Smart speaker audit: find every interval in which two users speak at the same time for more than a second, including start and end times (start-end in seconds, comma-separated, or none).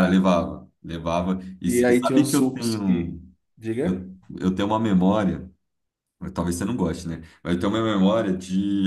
1.7-3.1